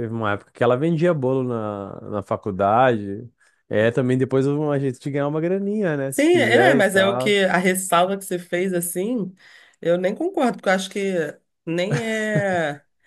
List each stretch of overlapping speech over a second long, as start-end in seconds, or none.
6.1-7.4